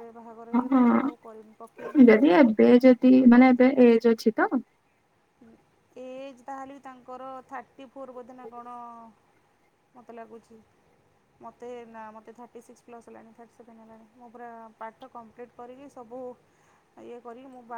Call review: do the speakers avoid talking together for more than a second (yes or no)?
no